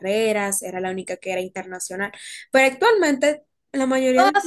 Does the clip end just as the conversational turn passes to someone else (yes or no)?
yes